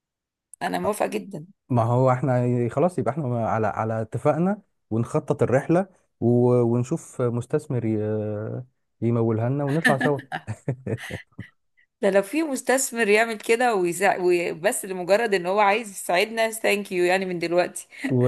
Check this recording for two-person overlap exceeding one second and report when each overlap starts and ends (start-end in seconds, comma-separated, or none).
none